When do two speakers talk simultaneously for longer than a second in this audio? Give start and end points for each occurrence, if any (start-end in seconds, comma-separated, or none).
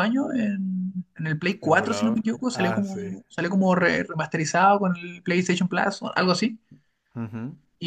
1.6-3.1